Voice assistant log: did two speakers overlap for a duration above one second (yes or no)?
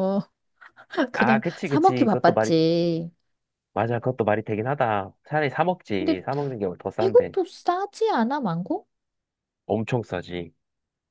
yes